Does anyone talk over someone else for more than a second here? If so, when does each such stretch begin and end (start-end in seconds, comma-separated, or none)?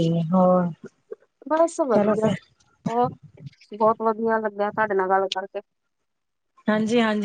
none